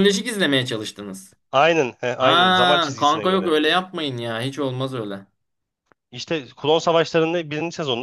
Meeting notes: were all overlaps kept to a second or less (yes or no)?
no